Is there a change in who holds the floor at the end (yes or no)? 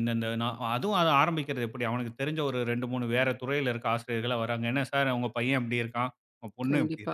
yes